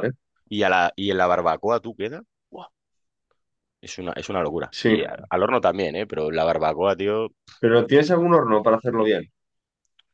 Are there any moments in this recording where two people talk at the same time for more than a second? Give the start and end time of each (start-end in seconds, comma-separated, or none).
none